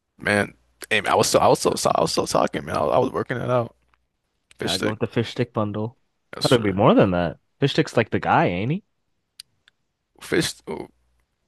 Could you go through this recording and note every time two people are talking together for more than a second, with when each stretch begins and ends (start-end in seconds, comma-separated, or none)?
none